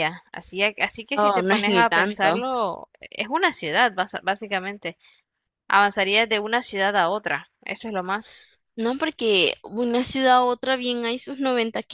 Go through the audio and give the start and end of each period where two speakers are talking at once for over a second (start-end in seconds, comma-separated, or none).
1.1-2.4